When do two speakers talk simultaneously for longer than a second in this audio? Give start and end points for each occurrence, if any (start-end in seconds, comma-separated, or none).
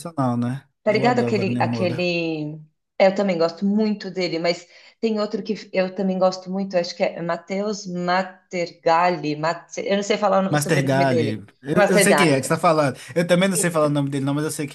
0.8-2.1, 10.5-12.5